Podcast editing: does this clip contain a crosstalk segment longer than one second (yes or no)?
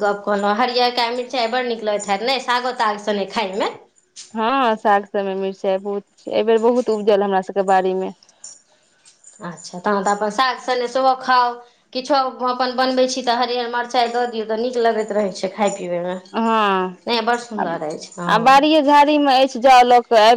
no